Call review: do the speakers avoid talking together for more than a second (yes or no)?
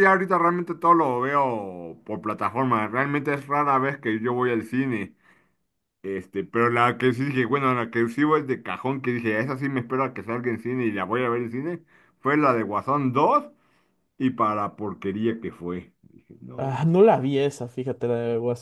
yes